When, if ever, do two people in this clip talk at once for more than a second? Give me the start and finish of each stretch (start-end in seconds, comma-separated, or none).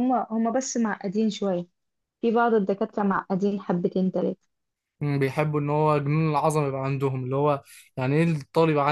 none